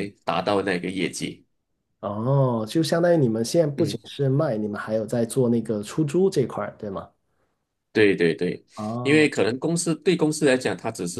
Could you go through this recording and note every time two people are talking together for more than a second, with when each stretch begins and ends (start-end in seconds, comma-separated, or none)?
none